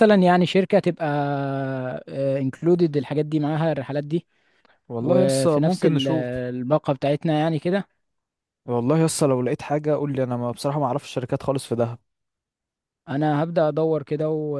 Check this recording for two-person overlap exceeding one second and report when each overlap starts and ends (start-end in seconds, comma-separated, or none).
5.0-6.3